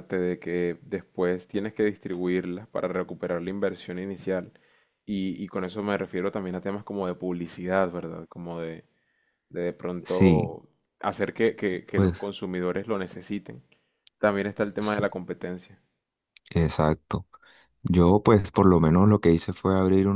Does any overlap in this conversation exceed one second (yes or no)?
no